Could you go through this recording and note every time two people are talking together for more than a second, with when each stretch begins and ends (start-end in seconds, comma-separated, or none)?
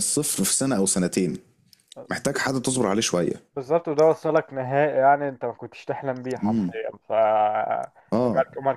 none